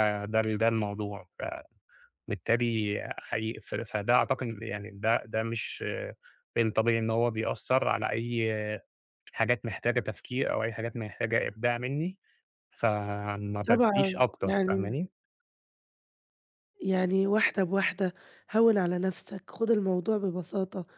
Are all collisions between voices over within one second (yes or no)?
no